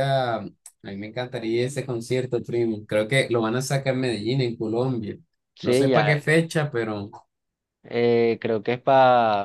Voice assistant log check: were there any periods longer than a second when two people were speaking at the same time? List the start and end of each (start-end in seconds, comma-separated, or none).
none